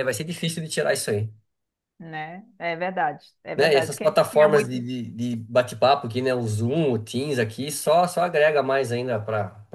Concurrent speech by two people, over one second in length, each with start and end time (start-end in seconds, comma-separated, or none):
3.5-4.8